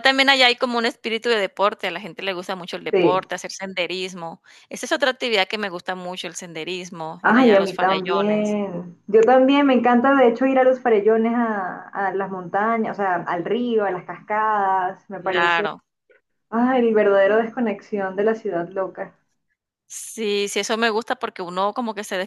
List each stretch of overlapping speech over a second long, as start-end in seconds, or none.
7.2-8.6